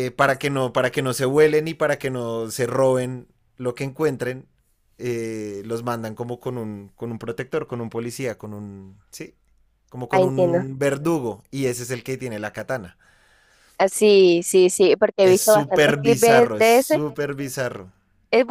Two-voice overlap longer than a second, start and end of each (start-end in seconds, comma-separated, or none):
15.2-17.0